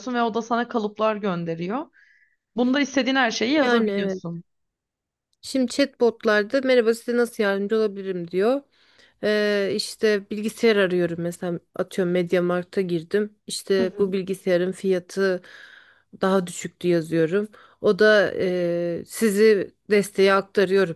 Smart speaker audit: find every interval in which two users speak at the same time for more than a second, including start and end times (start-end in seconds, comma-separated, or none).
none